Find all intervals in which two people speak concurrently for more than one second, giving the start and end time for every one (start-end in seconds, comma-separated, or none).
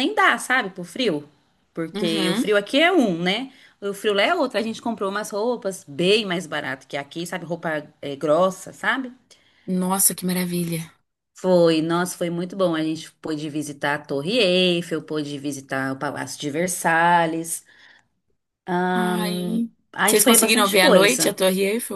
18.9-21.4